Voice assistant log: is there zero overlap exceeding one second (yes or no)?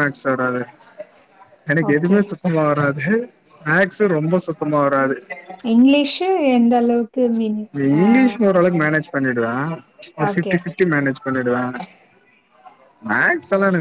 yes